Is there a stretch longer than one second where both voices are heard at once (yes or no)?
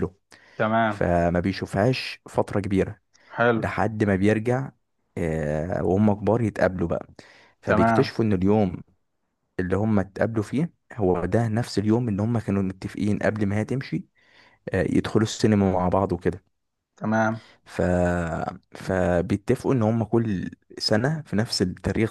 no